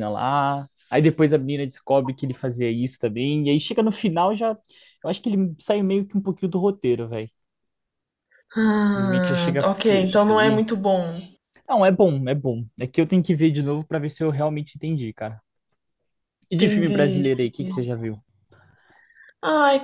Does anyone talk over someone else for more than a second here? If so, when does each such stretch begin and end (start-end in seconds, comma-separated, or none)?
8.9-10.7, 16.6-17.9